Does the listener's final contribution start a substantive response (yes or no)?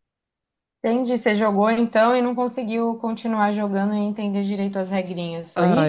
yes